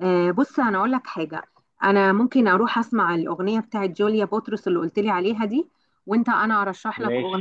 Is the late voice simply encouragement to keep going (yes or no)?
yes